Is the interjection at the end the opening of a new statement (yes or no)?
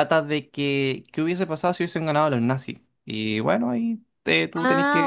yes